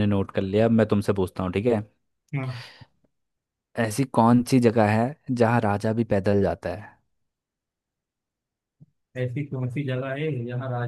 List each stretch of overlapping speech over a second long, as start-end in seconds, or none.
none